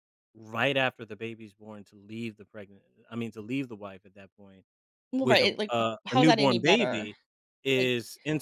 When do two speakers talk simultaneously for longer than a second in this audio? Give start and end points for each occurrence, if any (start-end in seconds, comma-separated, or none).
5.2-7.1